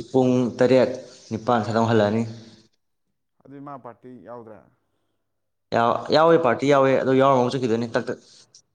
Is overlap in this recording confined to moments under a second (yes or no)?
yes